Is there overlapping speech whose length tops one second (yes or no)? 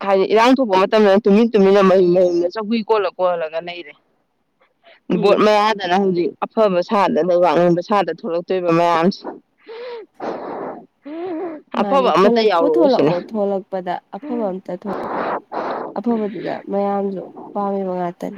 yes